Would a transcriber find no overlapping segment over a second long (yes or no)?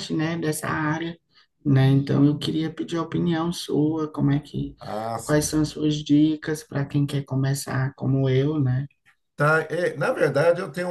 yes